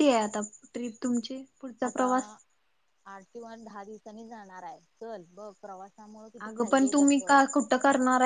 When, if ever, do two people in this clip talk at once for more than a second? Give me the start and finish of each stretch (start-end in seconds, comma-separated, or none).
none